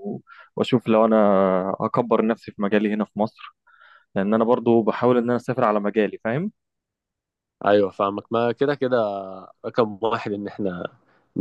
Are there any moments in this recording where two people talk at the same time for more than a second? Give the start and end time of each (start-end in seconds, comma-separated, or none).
none